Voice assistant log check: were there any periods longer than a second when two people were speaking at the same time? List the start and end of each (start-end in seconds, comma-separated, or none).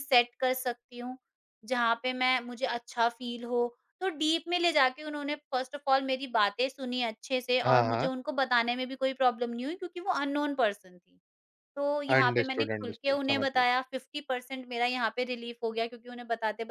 12.1-13.7